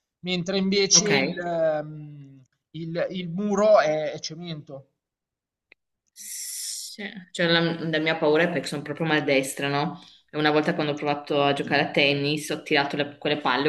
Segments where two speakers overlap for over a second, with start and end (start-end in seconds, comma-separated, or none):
none